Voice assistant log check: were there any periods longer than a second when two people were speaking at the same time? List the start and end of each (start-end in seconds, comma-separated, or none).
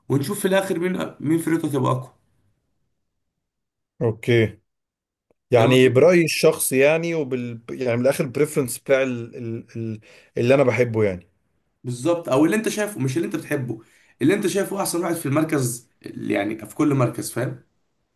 none